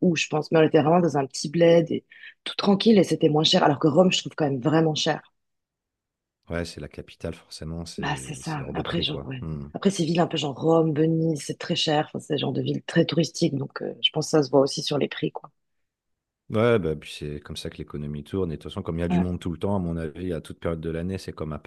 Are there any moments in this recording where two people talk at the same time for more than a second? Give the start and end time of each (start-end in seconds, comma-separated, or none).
8.0-9.7